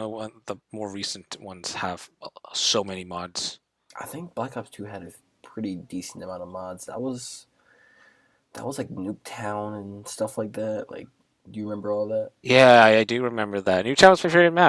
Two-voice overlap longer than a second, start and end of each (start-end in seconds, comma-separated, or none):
none